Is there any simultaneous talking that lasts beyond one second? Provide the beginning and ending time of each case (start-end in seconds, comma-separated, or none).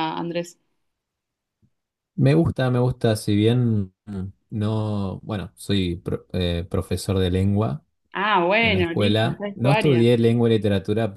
8.6-10.0